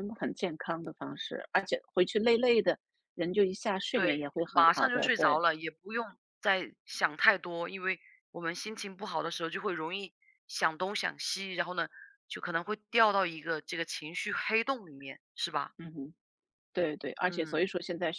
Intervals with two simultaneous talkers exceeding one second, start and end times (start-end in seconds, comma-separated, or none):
3.9-5.4